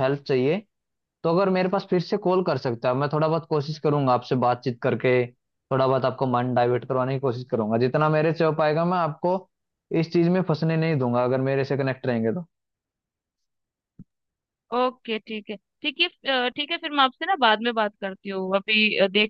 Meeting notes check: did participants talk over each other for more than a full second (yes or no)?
no